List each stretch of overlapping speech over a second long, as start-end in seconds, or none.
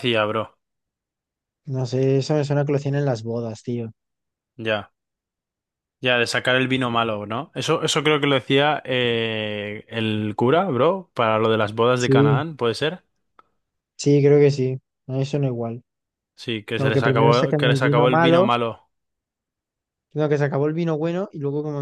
16.8-18.5